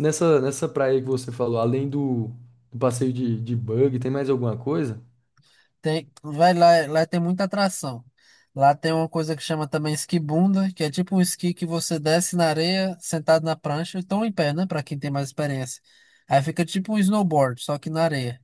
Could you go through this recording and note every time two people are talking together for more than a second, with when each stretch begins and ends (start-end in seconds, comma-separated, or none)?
none